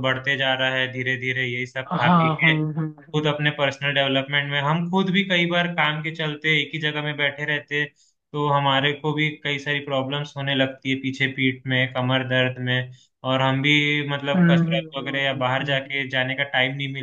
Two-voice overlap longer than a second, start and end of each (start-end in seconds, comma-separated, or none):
14.3-15.8